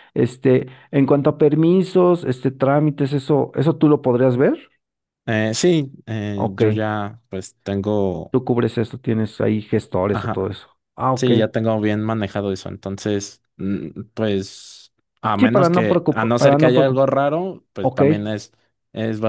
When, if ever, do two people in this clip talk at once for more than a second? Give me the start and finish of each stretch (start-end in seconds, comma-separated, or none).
15.4-17.0